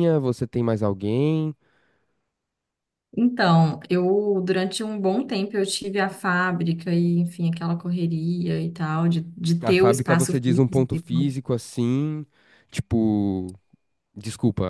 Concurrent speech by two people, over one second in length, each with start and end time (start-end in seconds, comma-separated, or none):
9.6-11.3